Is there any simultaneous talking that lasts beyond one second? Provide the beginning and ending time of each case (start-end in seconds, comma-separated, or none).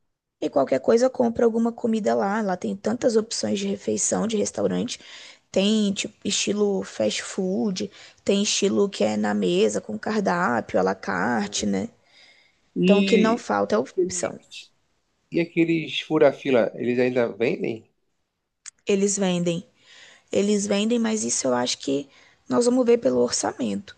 12.8-14.4